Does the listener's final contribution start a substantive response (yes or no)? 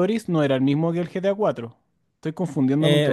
yes